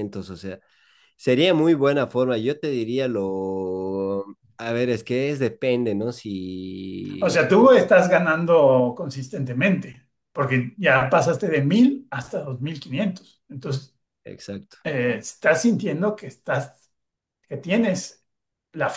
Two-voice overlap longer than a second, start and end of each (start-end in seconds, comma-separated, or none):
none